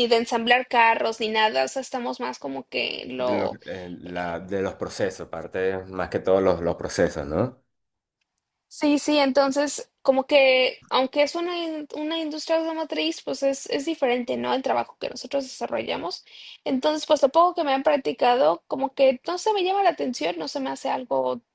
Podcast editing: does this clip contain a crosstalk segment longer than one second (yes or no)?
no